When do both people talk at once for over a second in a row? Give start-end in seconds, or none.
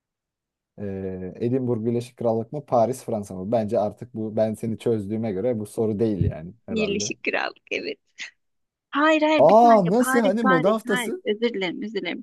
9.4-11.2